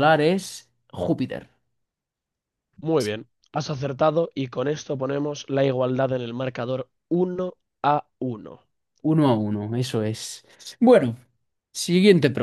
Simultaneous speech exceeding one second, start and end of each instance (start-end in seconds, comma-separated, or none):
none